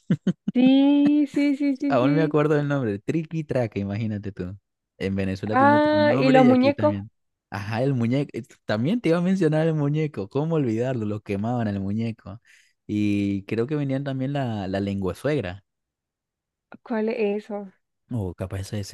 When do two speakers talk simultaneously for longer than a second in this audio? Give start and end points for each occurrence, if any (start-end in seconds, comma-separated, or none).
5.5-7.0